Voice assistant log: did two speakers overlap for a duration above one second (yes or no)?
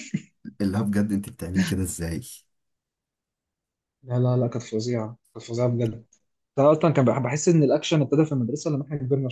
no